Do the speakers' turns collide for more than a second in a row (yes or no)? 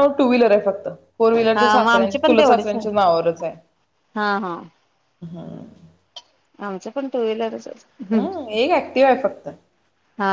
yes